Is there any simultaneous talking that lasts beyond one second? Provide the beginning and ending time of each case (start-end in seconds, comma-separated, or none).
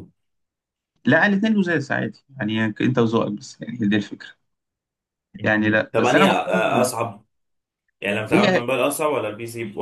5.4-6.9